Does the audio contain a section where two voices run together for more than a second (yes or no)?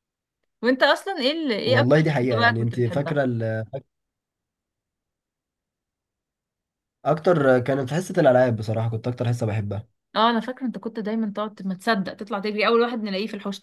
yes